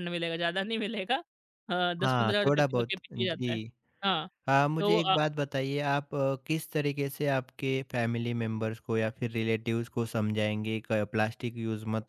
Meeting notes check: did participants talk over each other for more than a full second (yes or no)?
yes